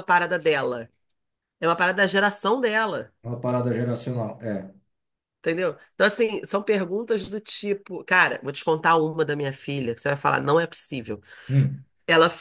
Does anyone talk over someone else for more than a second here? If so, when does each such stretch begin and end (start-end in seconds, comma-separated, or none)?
none